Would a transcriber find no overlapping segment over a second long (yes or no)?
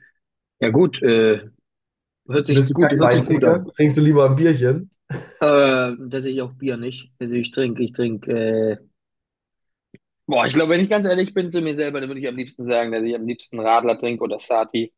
no